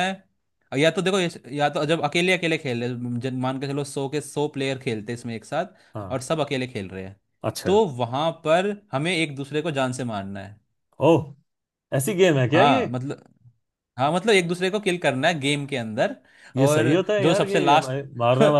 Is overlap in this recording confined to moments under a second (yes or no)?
no